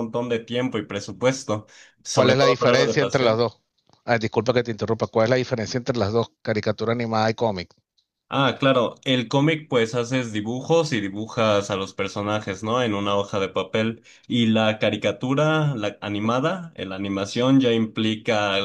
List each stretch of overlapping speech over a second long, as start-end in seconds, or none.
2.1-3.4